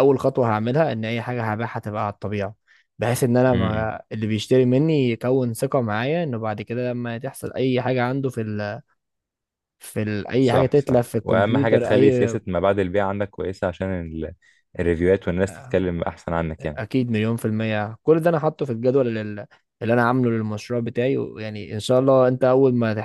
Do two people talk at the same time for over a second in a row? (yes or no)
yes